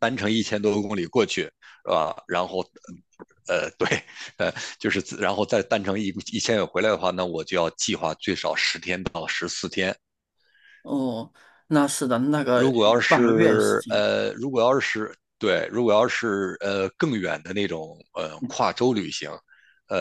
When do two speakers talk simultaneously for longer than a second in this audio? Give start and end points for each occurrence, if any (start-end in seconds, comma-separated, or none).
12.5-14.1